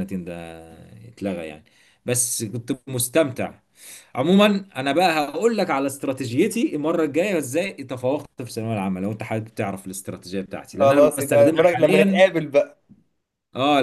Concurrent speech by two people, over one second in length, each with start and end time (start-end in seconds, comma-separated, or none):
10.8-12.2